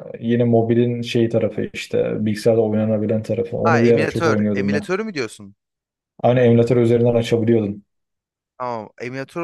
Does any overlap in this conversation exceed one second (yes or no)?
yes